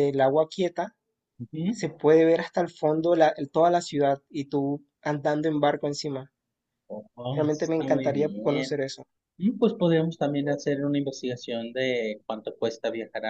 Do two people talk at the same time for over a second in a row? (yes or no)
yes